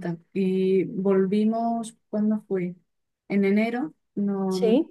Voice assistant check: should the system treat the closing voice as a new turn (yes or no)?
no